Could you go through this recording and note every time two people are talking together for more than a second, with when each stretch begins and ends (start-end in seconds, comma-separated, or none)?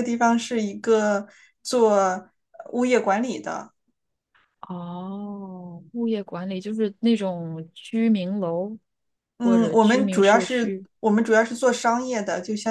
9.4-10.9